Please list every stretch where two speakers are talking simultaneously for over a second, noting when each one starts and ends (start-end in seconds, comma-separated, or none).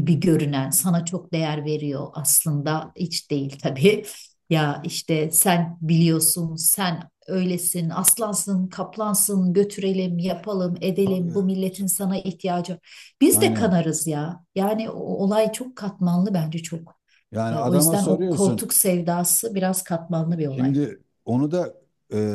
17.5-18.7